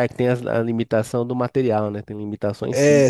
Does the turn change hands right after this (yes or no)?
yes